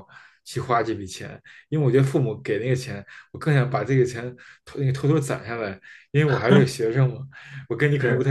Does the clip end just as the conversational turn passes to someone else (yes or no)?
no